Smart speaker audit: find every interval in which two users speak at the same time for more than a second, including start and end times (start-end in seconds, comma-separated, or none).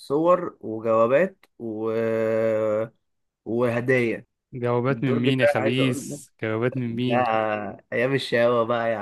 4.9-6.2